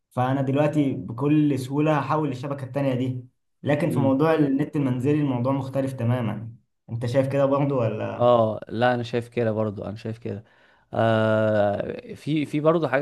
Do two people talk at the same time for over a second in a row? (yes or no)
no